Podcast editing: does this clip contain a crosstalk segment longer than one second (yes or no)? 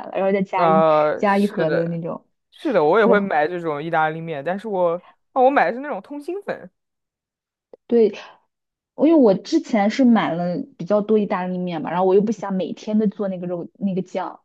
yes